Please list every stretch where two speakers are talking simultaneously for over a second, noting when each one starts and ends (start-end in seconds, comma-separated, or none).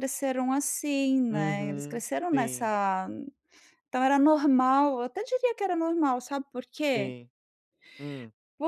1.3-2.7